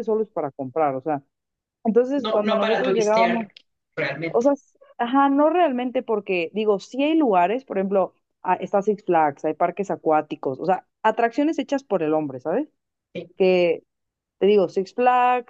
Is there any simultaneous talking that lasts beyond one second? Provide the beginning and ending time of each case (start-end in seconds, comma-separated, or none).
2.1-3.5